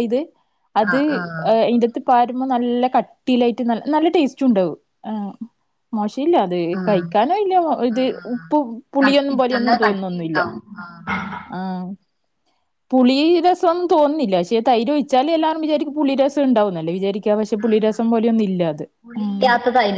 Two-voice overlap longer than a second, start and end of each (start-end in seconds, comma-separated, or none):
9.0-10.4